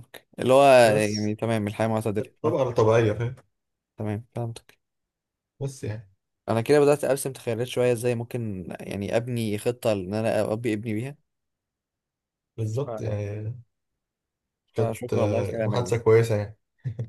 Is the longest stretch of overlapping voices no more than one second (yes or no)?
no